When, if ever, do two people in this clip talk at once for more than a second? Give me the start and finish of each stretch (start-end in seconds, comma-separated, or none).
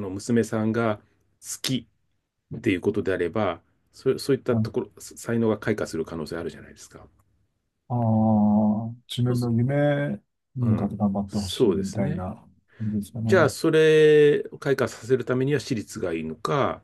10.6-12.3